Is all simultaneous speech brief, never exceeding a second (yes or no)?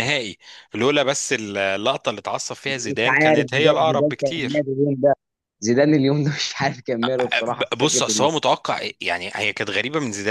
no